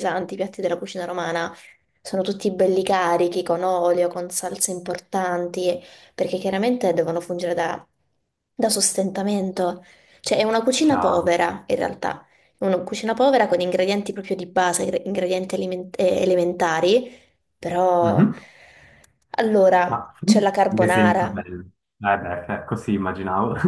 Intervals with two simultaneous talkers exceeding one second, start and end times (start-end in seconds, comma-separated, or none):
19.9-21.4